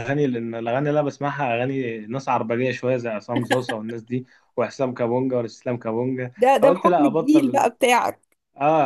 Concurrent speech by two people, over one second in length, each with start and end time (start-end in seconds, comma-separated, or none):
6.4-7.7